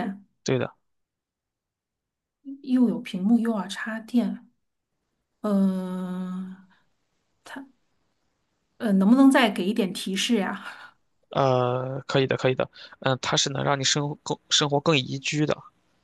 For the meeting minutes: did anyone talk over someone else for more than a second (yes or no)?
no